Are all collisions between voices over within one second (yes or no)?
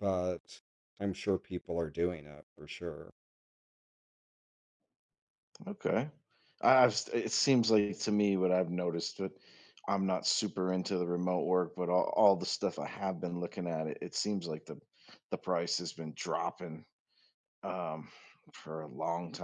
yes